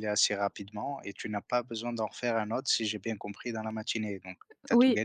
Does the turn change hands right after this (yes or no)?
yes